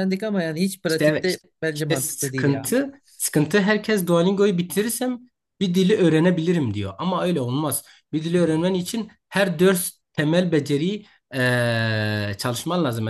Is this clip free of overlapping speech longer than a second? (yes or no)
no